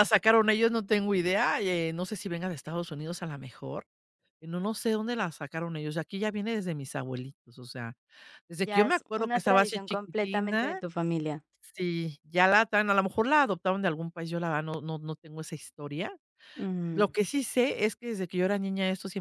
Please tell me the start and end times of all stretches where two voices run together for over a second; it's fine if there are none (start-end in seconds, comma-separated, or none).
8.6-10.8